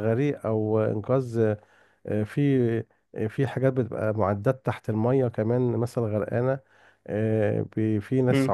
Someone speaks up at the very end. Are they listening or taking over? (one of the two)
listening